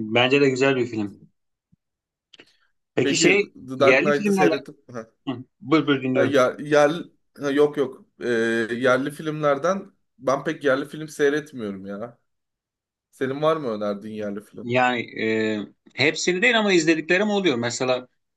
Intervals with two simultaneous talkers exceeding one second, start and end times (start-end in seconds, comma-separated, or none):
3.0-4.6